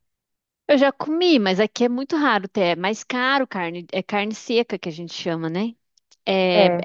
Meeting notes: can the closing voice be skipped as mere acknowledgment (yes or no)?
yes